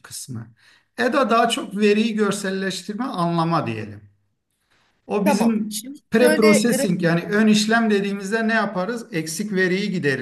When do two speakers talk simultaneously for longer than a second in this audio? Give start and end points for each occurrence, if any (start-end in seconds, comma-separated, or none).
5.2-7.1